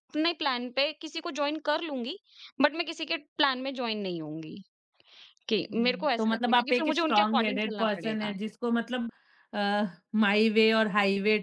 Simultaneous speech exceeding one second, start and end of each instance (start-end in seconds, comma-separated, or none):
5.7-8.3